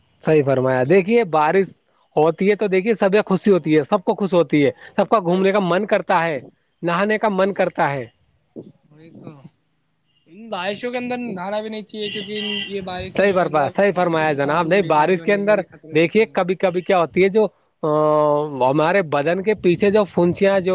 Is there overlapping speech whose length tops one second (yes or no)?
yes